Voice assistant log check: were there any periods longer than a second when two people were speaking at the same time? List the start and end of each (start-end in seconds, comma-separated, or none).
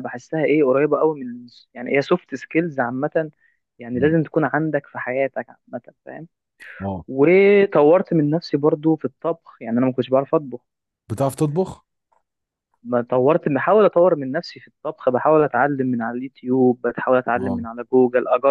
none